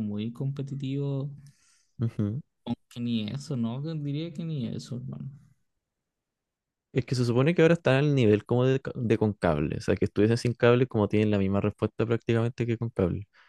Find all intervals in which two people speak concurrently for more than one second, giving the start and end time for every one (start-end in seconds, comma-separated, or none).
none